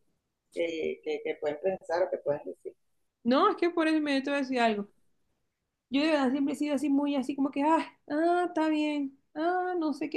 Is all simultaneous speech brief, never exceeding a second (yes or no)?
yes